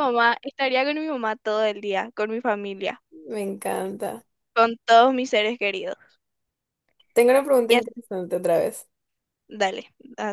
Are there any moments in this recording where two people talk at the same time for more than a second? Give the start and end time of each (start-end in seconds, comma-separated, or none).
none